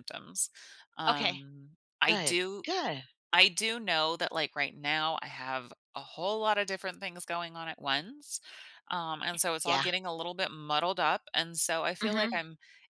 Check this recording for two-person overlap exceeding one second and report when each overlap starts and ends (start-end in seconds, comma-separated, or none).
none